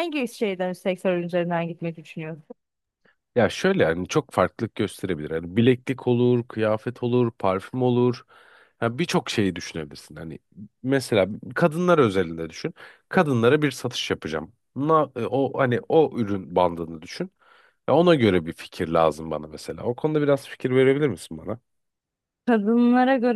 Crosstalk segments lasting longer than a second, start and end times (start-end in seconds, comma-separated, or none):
none